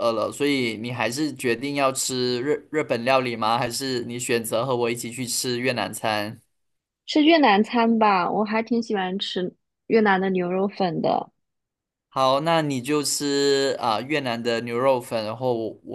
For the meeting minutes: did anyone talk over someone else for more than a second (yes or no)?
no